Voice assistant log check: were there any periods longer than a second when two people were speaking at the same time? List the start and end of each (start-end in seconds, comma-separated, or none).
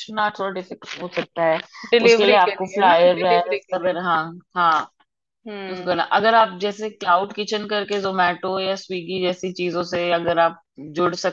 2.0-4.0